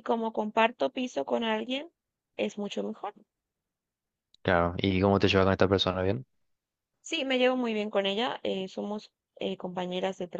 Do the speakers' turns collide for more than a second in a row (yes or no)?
no